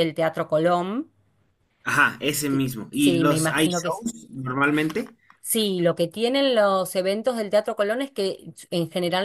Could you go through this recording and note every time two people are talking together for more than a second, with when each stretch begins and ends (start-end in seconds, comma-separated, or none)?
2.5-4.0